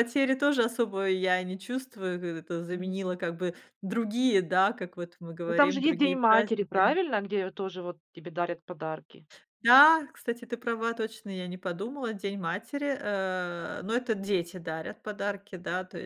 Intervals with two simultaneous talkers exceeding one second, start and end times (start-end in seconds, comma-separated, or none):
5.5-7.0